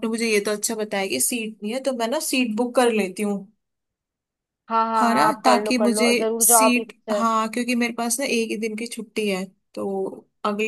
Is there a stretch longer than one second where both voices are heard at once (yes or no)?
yes